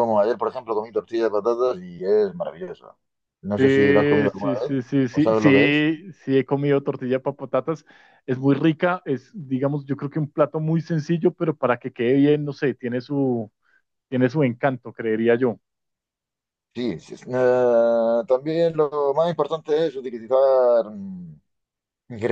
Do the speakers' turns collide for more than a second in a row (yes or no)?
yes